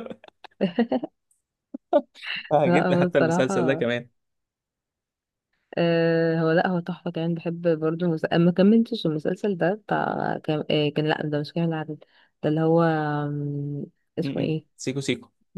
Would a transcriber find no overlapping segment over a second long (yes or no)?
no